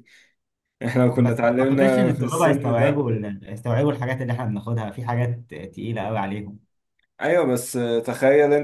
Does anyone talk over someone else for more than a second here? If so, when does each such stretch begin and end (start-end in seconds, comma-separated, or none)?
1.1-3.1